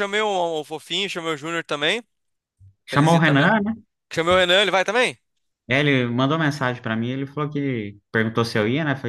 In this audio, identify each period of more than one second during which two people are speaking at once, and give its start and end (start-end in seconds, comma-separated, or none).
none